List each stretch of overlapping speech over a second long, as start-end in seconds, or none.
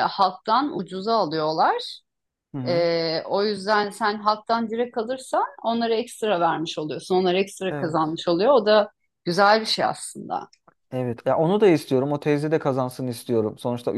none